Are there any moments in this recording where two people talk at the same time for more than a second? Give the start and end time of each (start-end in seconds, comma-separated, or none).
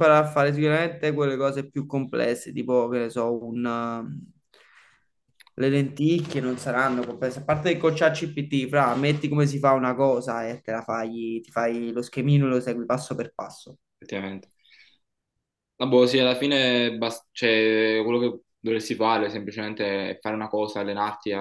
none